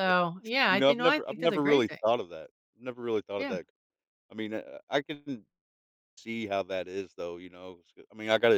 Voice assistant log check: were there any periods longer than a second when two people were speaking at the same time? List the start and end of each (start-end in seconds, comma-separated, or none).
0.7-2.0